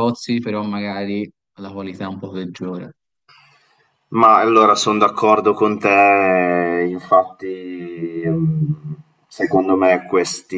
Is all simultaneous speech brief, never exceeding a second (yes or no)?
yes